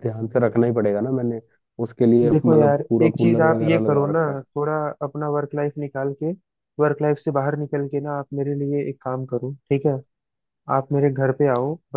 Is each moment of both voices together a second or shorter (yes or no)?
no